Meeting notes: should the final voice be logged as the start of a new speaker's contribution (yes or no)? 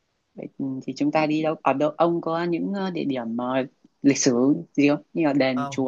yes